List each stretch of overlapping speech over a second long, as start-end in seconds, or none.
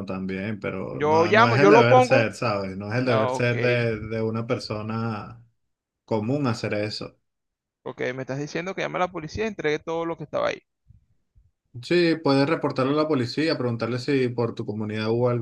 0.9-2.2